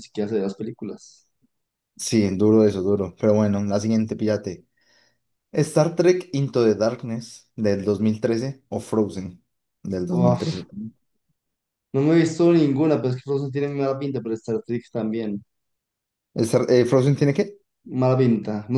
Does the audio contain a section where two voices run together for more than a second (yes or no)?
no